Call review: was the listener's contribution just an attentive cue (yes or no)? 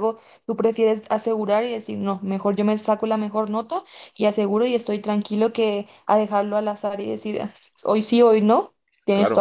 no